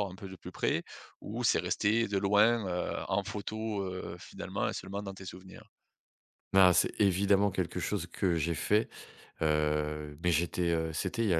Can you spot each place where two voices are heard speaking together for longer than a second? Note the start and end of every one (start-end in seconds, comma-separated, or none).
none